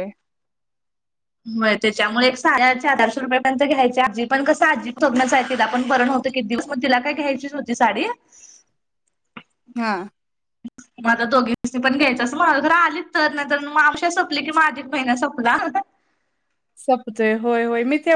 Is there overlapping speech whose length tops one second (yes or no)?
no